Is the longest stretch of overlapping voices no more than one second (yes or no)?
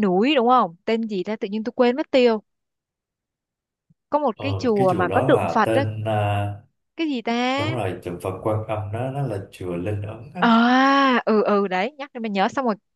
no